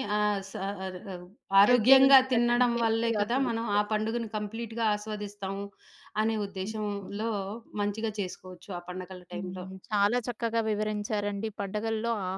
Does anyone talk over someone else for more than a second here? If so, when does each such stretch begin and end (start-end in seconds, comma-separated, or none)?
1.7-3.9